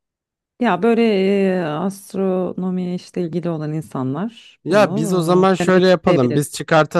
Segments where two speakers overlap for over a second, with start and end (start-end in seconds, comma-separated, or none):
4.6-6.4